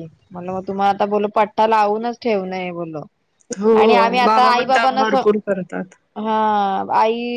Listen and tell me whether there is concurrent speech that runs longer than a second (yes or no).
no